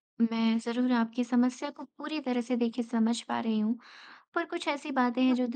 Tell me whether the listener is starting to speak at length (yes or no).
no